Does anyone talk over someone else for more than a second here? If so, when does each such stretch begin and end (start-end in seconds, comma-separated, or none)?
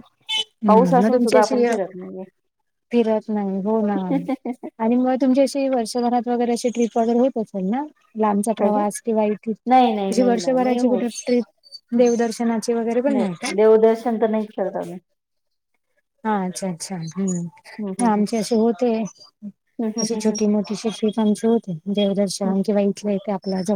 9.7-11.1